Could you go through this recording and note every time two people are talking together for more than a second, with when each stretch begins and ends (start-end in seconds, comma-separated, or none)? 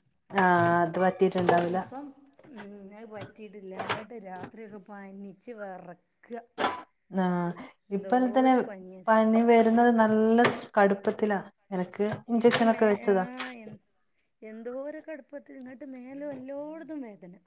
none